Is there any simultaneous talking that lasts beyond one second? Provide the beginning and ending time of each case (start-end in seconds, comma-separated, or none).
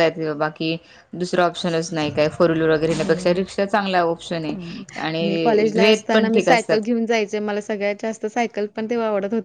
5.2-6.7